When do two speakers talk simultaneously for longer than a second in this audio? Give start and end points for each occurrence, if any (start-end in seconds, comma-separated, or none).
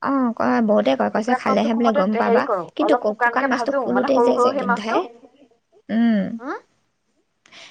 1.1-5.0